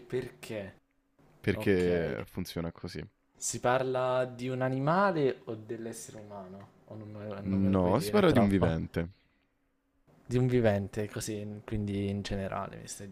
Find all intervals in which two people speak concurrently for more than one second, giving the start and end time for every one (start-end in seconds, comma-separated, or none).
7.4-8.7